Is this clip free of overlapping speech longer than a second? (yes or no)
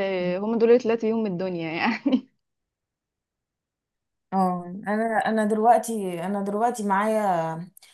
yes